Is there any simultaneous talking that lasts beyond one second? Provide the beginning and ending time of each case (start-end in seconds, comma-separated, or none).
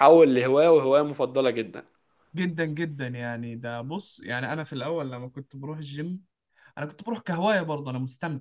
none